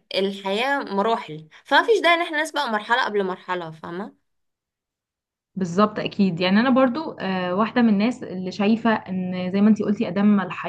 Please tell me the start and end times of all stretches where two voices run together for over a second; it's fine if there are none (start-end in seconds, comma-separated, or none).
none